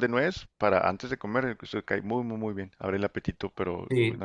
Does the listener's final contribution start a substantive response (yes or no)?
yes